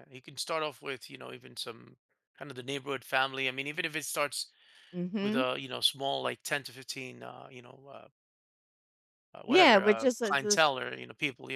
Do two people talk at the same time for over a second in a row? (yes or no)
yes